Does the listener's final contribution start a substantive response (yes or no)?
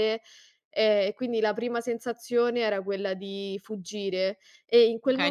yes